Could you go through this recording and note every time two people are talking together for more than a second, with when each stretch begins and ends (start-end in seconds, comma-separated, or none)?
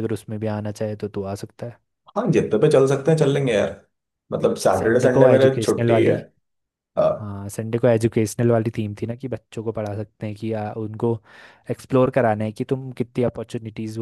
4.7-6.1